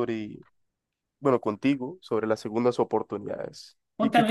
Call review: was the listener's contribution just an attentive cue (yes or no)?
no